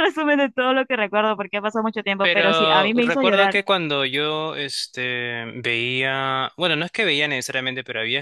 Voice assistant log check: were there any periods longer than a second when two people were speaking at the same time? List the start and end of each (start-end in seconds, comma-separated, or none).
2.2-3.5